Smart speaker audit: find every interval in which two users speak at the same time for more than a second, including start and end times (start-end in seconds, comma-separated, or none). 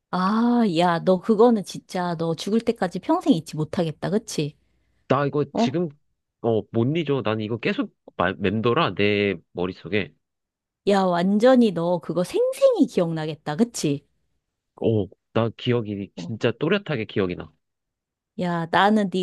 none